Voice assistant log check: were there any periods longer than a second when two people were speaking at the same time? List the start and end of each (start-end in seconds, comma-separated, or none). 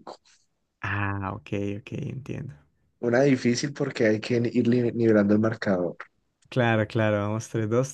none